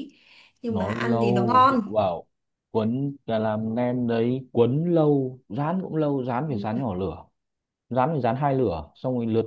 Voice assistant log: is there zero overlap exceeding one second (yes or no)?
no